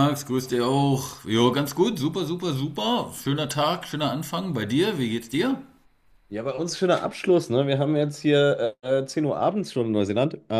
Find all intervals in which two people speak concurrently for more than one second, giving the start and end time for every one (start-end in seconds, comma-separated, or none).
none